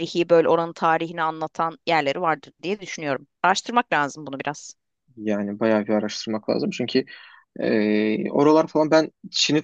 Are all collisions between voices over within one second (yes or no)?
yes